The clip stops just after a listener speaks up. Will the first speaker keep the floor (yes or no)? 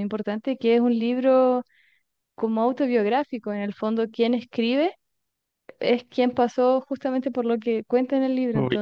no